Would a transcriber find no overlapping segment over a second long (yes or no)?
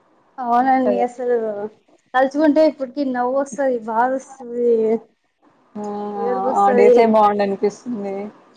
yes